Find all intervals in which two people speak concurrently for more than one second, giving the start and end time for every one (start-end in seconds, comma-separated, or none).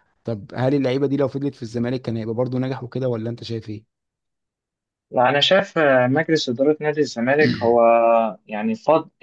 none